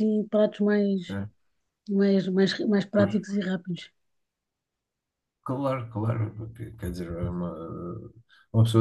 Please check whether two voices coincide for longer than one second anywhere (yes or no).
no